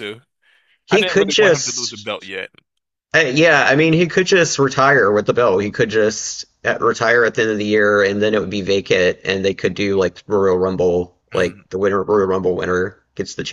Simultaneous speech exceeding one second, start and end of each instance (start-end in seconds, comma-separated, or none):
0.9-2.3